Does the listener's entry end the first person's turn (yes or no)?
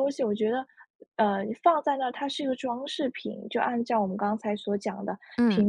no